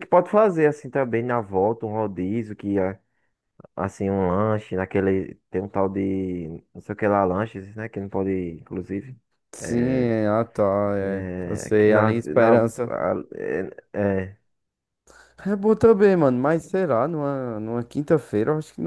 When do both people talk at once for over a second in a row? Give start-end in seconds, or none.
11.0-12.9